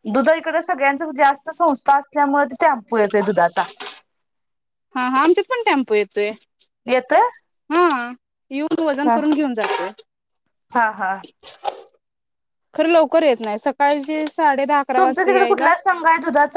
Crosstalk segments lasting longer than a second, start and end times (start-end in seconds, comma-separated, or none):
none